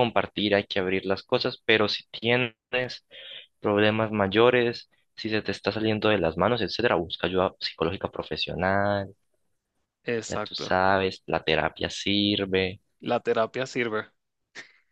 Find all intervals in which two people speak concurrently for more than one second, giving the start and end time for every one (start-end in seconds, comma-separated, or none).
none